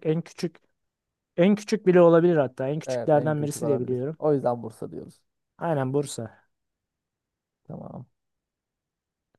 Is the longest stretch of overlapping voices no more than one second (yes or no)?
no